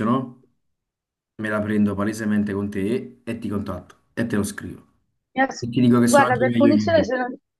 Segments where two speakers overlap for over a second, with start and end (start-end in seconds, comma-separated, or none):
5.6-7.1